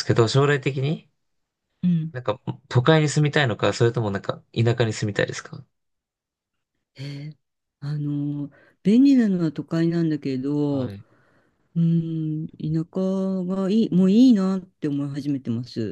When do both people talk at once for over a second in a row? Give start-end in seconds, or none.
none